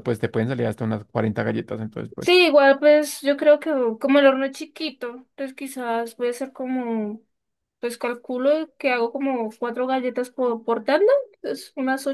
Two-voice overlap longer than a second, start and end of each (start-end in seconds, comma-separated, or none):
none